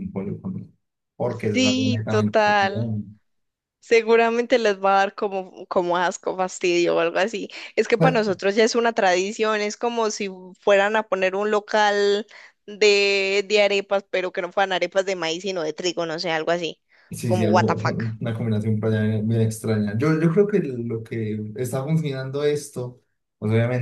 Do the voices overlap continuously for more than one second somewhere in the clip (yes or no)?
yes